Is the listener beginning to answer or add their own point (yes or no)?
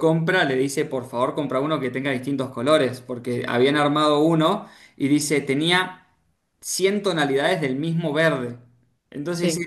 no